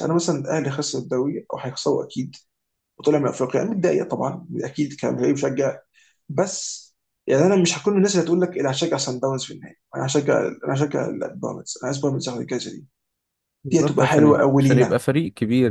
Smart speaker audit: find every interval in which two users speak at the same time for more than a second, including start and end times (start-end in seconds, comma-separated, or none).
13.7-15.0